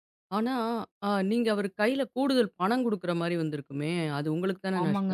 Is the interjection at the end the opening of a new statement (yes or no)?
yes